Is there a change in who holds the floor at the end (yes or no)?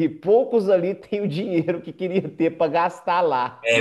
yes